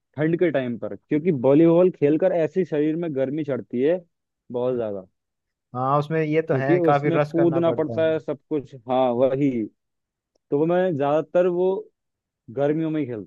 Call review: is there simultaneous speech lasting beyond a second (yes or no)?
yes